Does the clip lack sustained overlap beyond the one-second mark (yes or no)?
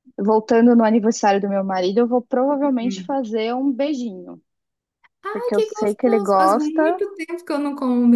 no